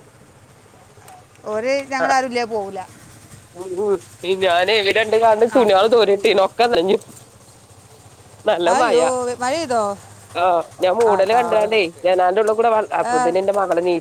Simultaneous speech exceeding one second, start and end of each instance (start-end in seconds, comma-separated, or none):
none